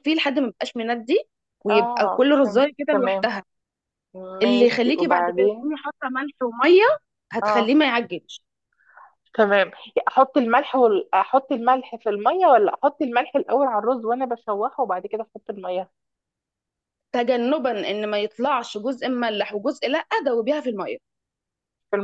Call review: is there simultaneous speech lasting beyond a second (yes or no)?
yes